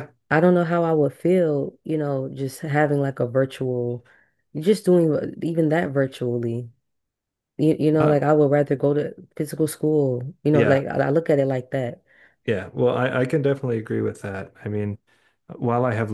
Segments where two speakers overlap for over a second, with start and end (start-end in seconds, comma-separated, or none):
none